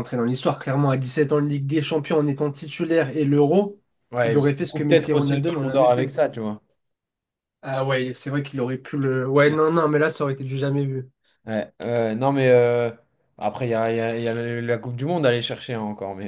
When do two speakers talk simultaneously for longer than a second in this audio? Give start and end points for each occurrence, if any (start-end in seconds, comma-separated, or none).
4.2-6.2